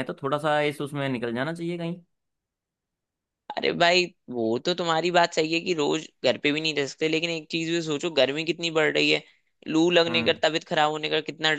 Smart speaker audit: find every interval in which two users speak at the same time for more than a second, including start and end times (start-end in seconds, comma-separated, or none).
none